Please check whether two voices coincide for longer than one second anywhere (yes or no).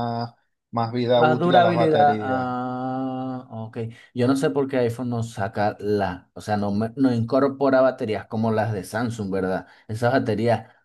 yes